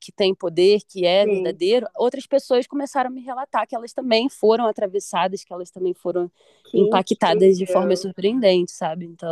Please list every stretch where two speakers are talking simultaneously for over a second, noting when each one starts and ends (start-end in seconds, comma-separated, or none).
6.7-8.1